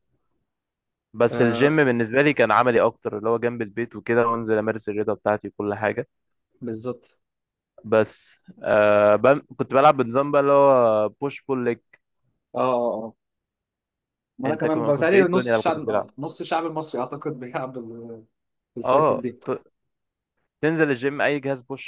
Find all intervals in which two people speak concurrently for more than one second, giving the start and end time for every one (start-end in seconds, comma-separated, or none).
14.4-16.1